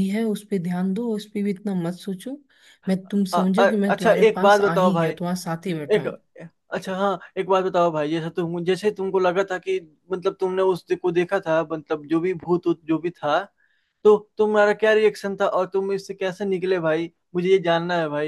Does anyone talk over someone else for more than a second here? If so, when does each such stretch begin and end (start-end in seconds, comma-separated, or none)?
3.3-5.1